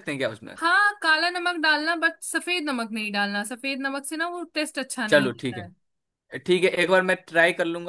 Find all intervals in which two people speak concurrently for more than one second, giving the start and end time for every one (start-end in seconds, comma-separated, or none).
none